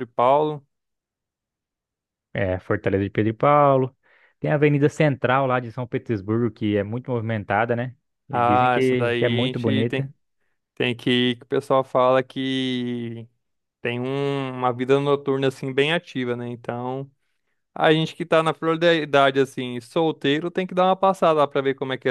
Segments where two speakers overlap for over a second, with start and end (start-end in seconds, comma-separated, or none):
8.3-10.1